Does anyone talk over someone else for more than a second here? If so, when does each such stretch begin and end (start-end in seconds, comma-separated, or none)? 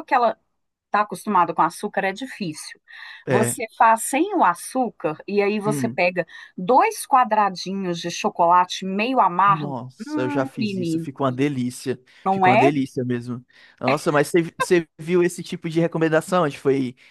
9.5-11.1